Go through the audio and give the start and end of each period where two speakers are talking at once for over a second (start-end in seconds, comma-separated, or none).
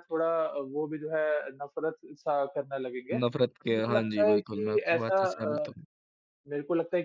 3.2-5.7